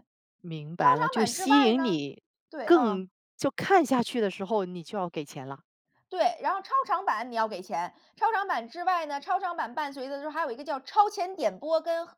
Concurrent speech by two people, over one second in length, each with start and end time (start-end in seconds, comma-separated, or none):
0.8-2.0